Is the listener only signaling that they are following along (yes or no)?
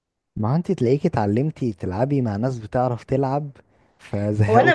no